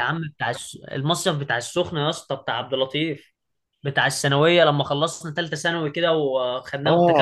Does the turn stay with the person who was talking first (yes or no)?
no